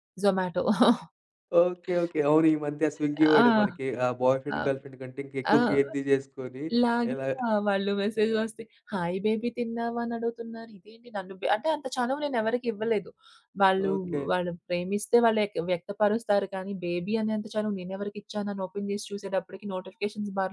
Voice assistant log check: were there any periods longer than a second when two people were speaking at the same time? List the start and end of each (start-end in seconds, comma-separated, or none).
none